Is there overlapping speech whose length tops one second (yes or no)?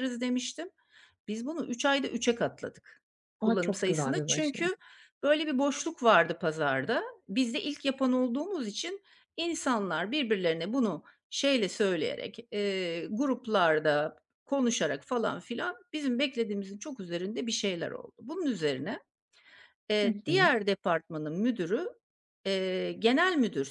yes